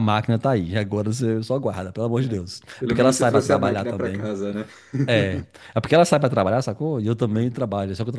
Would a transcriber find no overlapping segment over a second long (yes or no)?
no